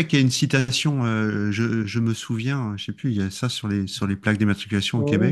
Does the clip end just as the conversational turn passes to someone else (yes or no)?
yes